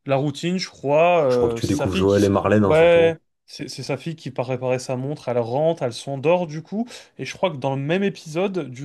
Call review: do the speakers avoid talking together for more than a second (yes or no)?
no